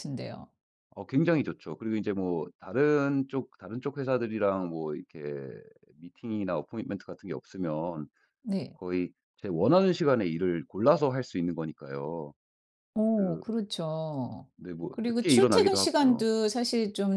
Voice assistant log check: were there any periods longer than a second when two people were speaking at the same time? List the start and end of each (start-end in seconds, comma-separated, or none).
14.9-16.3